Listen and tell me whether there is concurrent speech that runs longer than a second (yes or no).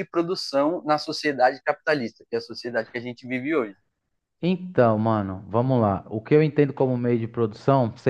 no